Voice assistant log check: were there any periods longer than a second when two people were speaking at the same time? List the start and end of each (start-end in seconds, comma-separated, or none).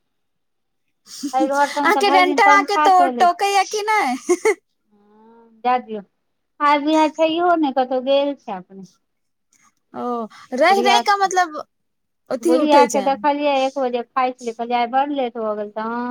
none